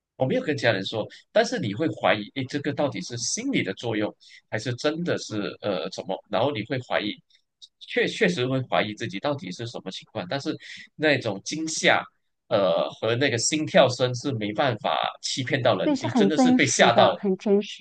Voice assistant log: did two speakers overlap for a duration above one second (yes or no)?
yes